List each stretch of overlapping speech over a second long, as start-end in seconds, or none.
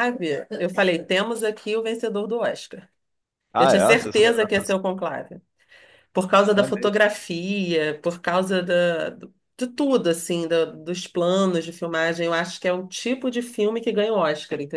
3.6-4.8